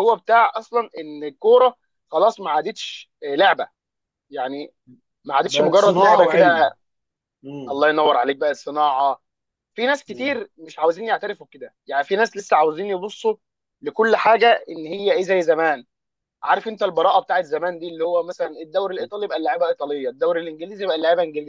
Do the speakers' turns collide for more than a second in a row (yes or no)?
yes